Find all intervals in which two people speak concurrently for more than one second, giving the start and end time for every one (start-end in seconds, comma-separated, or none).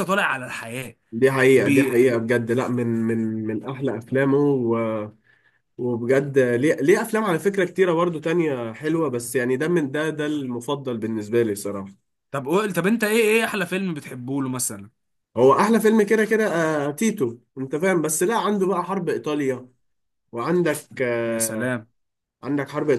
none